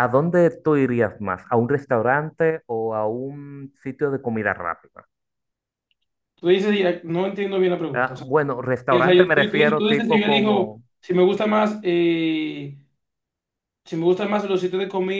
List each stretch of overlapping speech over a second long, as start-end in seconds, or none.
8.9-10.8